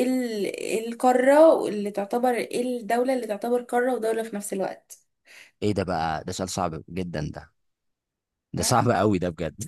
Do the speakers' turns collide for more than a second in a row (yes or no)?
no